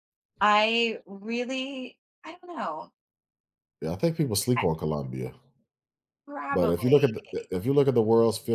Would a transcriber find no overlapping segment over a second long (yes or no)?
yes